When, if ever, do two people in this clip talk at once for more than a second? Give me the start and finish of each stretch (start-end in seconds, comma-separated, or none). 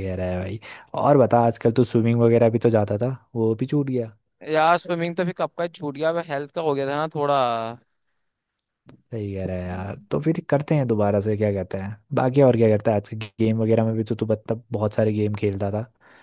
none